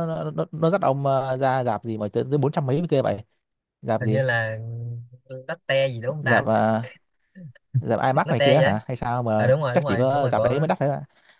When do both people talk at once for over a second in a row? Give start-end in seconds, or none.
9.4-10.7